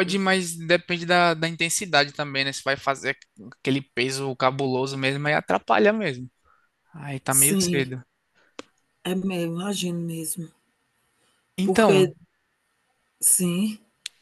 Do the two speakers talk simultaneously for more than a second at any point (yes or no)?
no